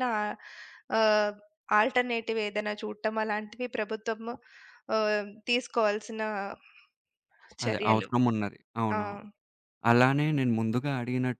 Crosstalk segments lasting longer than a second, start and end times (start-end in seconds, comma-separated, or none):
none